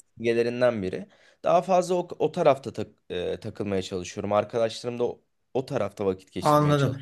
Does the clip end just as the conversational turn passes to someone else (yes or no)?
yes